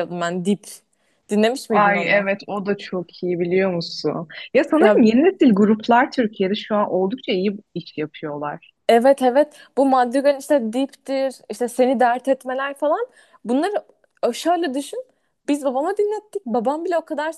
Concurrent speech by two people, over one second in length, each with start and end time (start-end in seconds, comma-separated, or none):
none